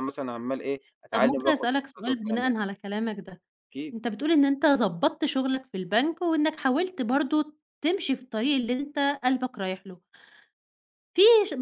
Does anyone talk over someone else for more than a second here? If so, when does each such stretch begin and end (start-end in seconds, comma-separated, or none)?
1.1-2.6